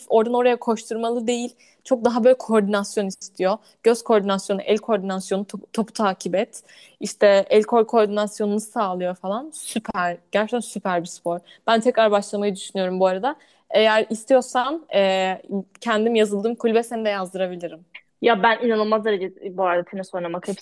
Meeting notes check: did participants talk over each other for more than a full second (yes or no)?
no